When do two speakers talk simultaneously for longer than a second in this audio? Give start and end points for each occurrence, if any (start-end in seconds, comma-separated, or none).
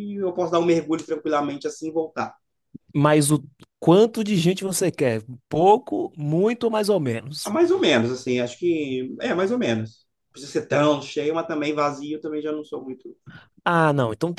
none